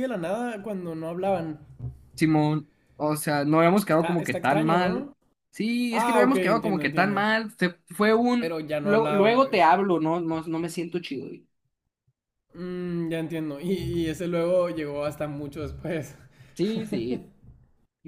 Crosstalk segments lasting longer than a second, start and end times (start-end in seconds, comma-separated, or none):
3.9-5.1, 5.9-7.2, 8.4-9.7